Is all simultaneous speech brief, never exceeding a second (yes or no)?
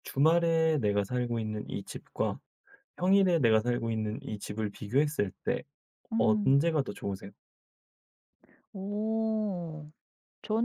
yes